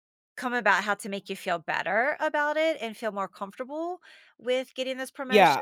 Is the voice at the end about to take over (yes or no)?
yes